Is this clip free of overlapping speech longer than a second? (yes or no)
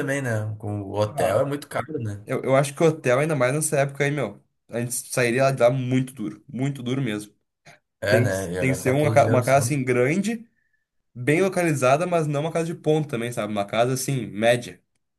no